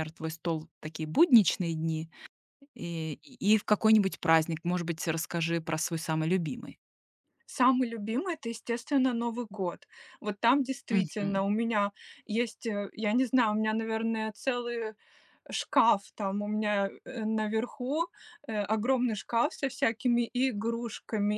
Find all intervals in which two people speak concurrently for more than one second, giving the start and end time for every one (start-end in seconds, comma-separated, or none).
none